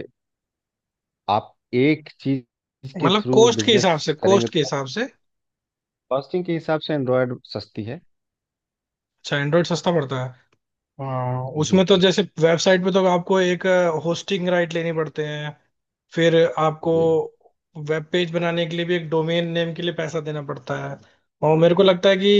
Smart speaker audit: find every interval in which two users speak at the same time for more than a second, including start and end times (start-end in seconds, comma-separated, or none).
3.0-4.8